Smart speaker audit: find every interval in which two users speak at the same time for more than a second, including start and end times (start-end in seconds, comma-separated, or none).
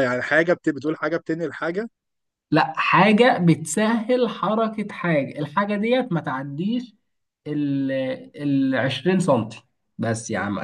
none